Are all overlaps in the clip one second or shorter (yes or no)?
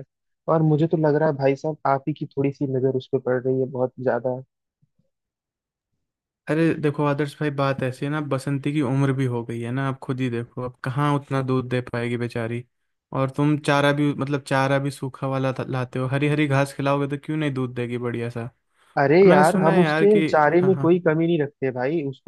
no